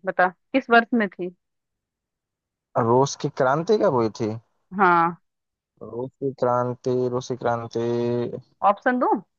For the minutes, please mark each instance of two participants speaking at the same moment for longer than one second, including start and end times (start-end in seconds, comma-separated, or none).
none